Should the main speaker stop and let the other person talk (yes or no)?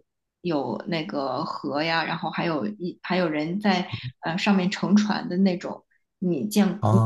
yes